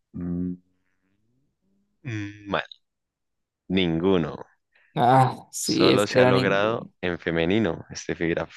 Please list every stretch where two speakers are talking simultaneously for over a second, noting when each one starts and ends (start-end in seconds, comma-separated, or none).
5.6-6.9